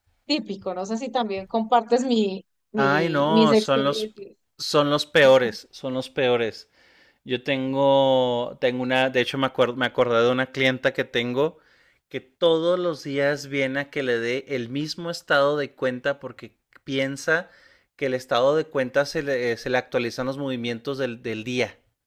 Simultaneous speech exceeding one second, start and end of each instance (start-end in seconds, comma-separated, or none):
2.8-4.2